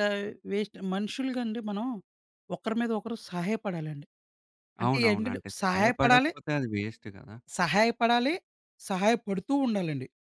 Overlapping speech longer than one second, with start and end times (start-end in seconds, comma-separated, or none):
4.8-6.3